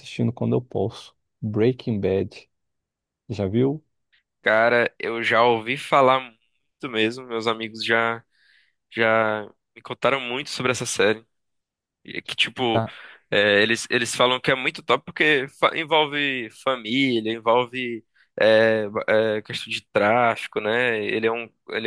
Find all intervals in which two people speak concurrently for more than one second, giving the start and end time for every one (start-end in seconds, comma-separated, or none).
none